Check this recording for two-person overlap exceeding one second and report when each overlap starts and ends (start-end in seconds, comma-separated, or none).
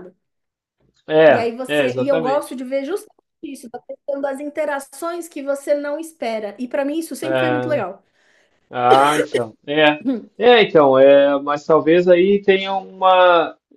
1.3-2.6